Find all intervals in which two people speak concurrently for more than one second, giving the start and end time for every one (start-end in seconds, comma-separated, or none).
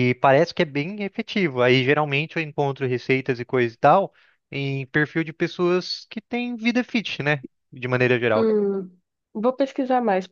none